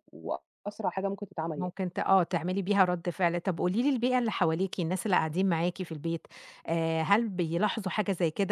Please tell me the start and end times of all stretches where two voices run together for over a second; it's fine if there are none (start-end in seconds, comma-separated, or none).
none